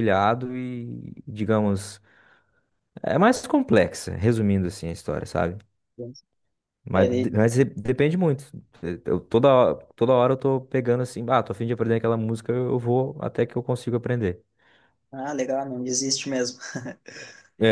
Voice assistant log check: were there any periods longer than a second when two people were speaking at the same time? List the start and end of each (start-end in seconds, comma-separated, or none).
none